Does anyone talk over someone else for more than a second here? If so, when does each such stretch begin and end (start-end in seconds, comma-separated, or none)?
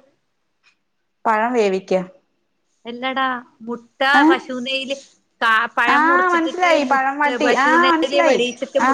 6.0-7.8